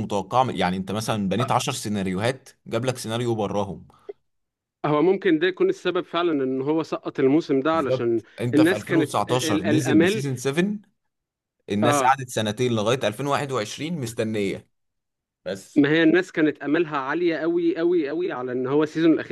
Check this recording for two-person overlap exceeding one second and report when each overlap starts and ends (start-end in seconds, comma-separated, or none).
7.7-10.2